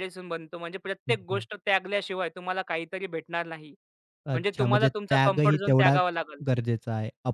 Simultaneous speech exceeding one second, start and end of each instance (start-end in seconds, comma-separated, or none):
4.3-6.0